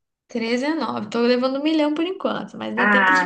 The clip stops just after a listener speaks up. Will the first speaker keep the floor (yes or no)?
no